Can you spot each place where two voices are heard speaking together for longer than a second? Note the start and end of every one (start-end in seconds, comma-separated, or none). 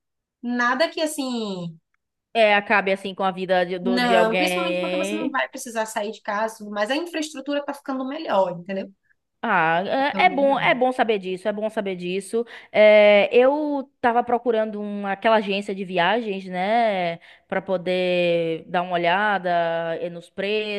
3.8-5.4